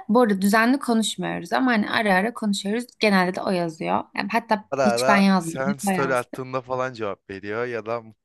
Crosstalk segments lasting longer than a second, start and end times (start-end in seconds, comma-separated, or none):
4.7-6.4